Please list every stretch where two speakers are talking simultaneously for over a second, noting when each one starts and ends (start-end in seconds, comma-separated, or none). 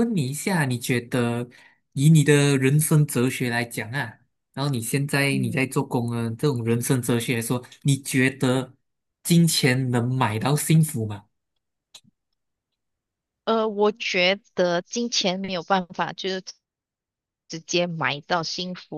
none